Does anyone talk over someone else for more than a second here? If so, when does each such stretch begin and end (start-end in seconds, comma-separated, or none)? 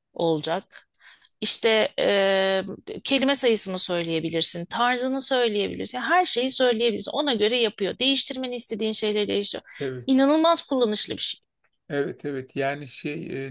none